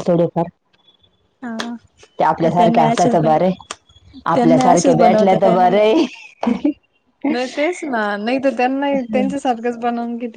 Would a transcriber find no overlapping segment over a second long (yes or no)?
no